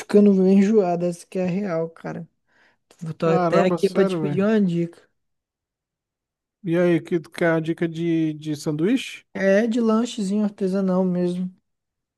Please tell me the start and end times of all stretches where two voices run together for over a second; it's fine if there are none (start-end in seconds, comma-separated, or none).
3.2-4.5